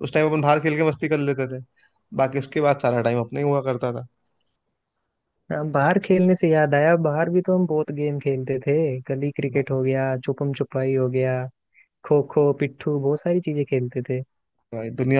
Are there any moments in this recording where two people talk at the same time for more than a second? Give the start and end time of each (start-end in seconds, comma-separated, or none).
none